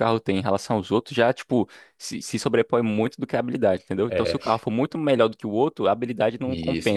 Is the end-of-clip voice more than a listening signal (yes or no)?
yes